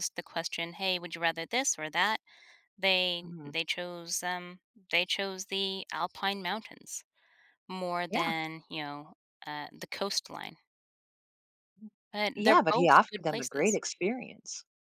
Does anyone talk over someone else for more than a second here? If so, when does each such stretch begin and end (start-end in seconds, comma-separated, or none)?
12.4-13.8